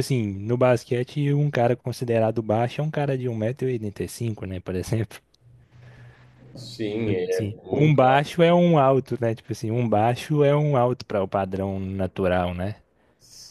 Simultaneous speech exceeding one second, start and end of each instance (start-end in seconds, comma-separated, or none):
7.0-8.3